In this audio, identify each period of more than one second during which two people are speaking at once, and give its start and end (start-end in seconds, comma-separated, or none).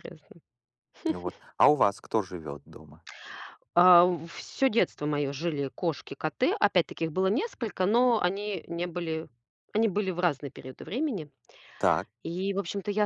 none